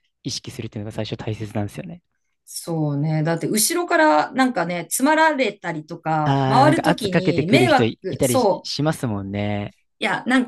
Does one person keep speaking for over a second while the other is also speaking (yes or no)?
yes